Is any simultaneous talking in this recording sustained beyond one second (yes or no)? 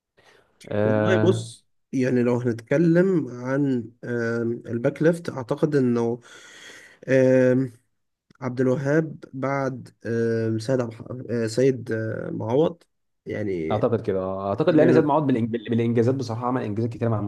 no